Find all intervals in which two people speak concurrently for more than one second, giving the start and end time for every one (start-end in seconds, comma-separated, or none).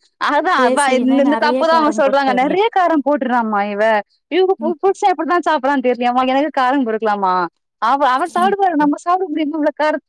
0.6-2.6